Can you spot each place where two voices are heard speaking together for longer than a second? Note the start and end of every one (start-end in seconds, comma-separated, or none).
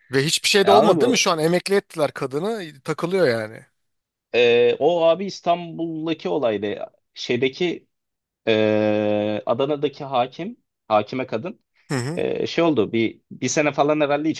none